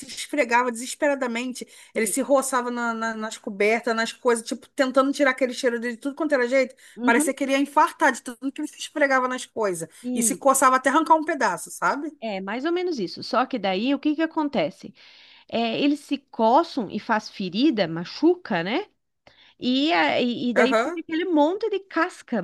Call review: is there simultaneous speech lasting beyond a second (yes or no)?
no